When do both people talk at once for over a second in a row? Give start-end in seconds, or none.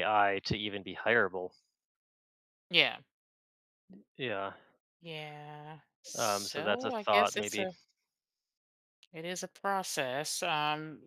6.2-7.7